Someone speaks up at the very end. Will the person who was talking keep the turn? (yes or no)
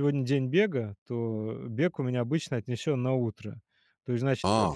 no